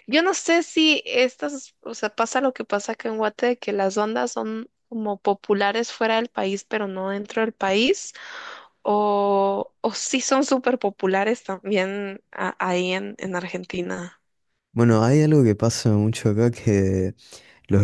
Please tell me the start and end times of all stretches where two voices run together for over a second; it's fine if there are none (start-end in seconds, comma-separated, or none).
none